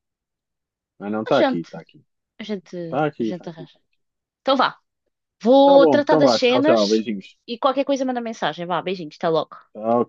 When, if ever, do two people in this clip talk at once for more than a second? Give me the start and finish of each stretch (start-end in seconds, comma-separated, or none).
5.7-7.0